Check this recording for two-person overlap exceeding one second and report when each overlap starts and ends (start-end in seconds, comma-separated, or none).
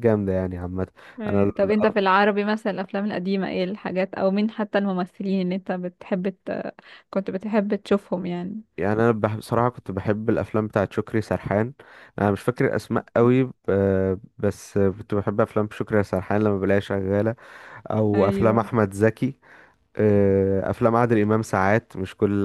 none